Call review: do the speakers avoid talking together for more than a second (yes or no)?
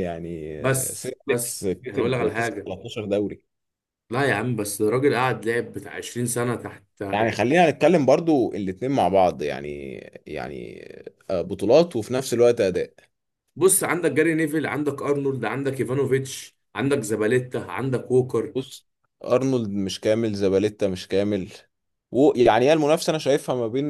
no